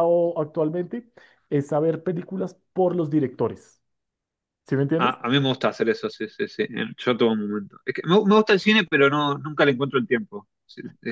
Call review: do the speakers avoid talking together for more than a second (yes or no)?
yes